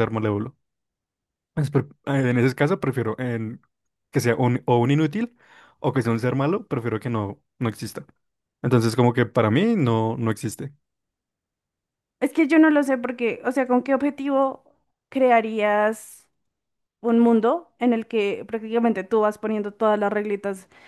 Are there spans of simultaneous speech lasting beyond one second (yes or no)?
no